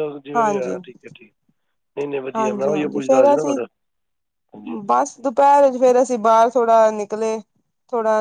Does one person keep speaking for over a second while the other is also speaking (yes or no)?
yes